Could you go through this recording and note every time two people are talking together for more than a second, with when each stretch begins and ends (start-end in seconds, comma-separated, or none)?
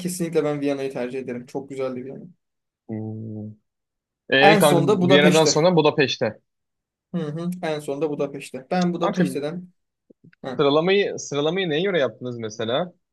4.4-5.6